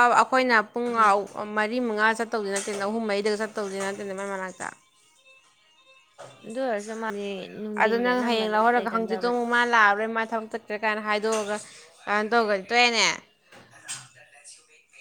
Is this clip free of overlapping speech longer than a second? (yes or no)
no